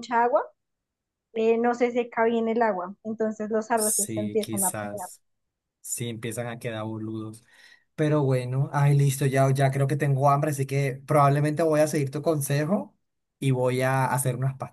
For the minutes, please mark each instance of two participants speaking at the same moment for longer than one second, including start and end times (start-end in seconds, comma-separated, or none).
3.7-5.1